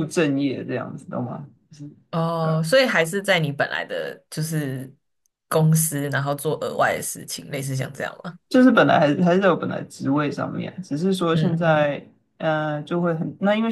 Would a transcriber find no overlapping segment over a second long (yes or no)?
yes